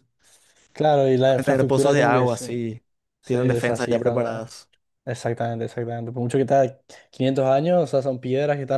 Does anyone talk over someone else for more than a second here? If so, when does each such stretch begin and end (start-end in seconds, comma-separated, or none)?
1.2-2.5, 3.2-4.5